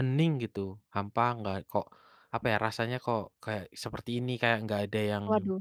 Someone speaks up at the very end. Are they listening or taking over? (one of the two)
listening